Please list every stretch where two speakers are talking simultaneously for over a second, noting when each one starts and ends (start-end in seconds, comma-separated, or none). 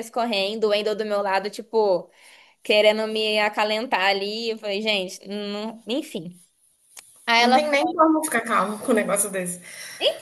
none